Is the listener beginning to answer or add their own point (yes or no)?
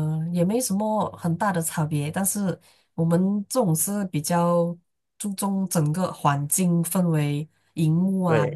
no